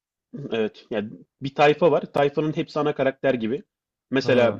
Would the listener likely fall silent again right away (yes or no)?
yes